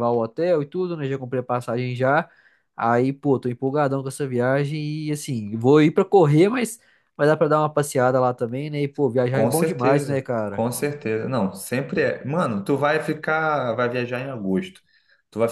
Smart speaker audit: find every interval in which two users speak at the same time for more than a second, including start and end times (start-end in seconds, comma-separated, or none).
9.3-10.6